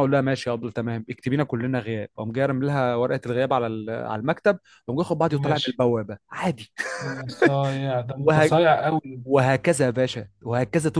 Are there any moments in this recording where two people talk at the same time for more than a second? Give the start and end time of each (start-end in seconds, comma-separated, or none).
none